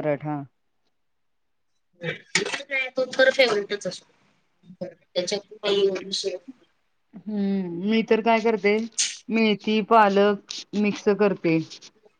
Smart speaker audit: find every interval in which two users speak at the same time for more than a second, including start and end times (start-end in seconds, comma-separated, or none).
none